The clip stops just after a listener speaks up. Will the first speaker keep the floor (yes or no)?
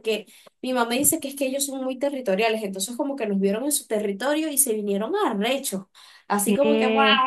yes